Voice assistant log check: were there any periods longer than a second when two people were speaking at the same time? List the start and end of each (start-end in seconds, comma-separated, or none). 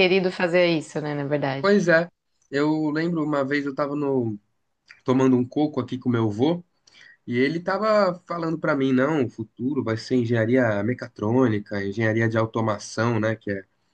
none